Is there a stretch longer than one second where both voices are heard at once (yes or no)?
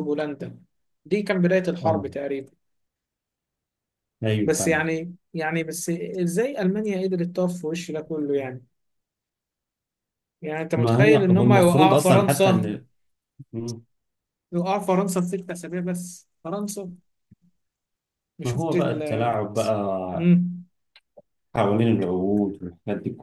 yes